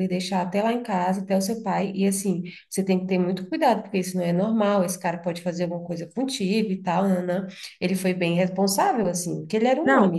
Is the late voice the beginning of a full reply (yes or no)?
yes